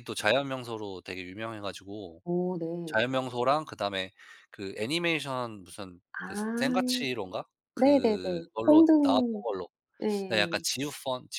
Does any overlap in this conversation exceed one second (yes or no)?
yes